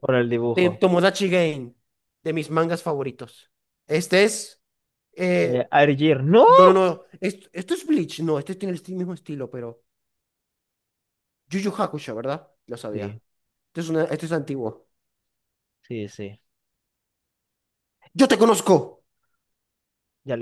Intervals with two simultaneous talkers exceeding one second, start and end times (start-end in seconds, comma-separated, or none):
none